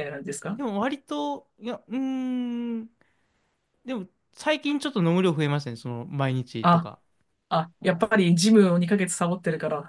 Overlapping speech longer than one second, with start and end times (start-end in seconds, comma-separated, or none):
none